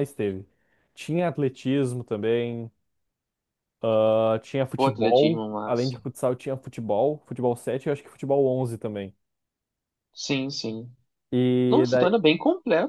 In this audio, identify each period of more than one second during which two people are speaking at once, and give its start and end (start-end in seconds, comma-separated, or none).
4.8-6.0